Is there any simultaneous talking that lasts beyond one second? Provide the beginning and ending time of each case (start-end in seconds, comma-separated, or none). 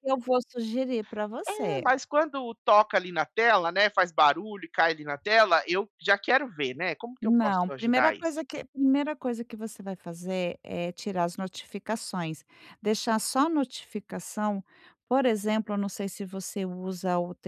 7.2-8.4